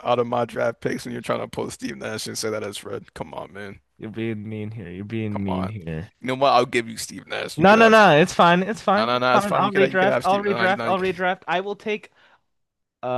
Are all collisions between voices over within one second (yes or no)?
no